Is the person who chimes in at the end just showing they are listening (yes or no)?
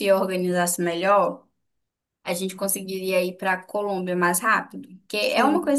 yes